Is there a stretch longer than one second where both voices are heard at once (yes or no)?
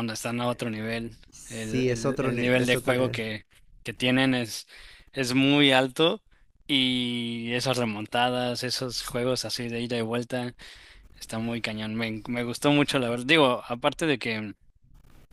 yes